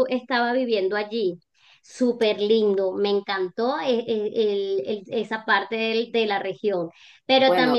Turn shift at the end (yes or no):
no